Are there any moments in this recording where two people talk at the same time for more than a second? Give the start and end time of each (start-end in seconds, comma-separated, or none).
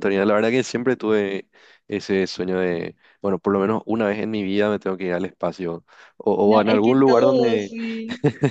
6.5-7.8